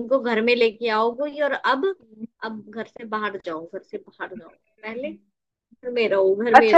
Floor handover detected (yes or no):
yes